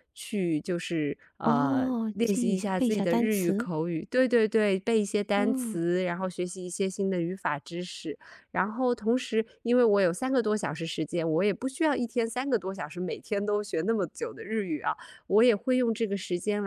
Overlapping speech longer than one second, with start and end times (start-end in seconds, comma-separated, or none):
1.4-3.7